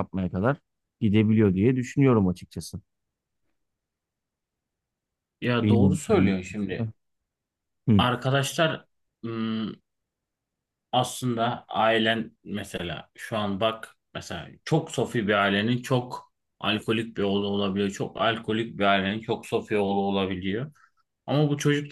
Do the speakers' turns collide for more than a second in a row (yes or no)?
yes